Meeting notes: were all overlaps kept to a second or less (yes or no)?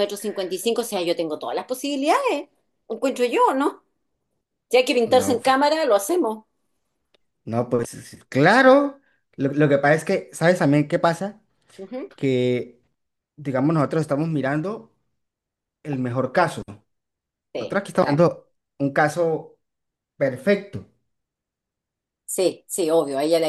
yes